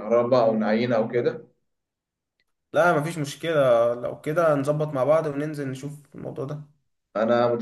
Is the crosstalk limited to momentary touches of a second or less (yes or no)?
yes